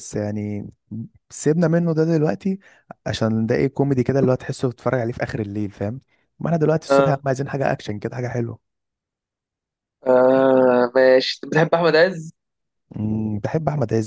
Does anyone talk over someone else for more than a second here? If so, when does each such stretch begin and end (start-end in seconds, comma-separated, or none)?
none